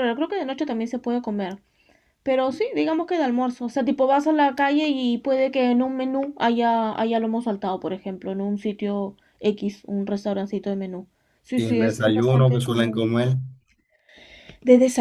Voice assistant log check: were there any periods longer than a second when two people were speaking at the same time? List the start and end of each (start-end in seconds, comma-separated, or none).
11.5-13.1